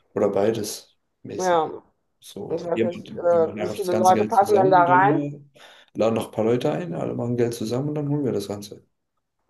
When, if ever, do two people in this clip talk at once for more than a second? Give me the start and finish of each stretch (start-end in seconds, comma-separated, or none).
2.5-5.2